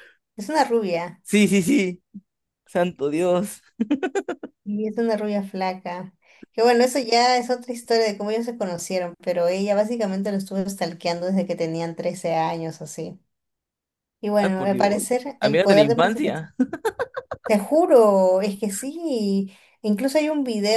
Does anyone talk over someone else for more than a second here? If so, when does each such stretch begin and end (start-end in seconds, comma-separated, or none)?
14.4-15.9